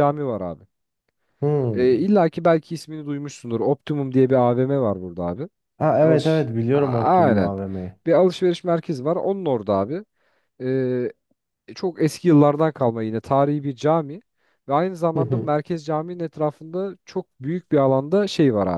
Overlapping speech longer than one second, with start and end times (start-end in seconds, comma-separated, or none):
6.0-7.5